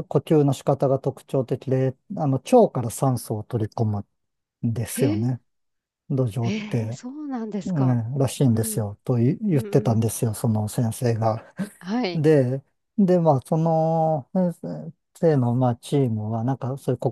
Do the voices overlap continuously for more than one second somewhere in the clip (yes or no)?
no